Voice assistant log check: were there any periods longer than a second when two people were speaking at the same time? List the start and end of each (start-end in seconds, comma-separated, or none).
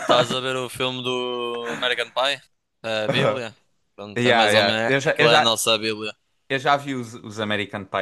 4.2-5.6